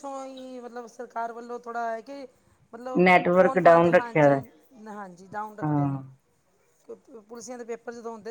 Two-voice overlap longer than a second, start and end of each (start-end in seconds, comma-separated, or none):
3.0-4.4